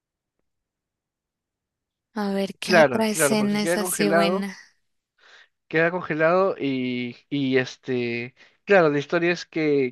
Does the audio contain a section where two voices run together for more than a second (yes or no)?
yes